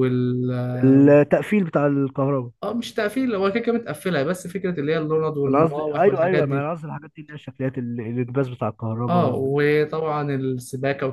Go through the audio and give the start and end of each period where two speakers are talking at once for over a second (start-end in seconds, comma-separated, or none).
5.5-6.7